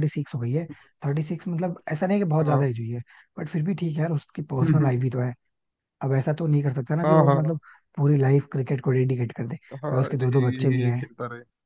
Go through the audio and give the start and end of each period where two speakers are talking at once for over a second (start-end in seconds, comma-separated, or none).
9.8-11.1